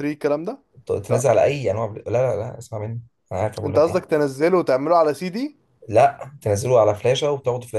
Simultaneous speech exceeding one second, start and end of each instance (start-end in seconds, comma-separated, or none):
none